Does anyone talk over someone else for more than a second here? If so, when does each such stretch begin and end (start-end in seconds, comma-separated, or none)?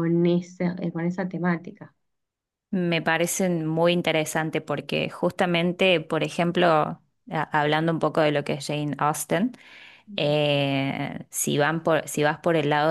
none